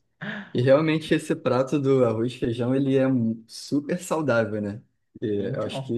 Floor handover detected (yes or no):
no